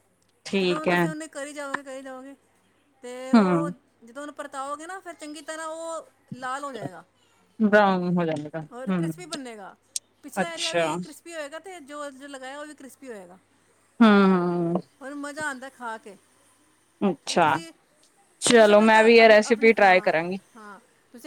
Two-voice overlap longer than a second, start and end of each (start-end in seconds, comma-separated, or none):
18.5-20.4